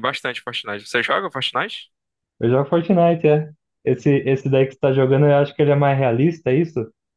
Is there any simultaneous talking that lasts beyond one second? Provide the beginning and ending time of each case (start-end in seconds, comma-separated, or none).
none